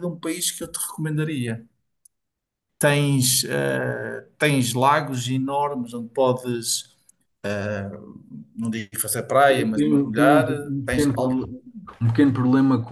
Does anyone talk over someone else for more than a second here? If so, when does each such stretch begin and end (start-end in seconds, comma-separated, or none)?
9.5-11.5